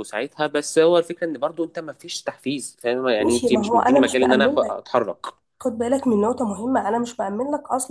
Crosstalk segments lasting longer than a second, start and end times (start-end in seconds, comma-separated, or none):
3.2-4.8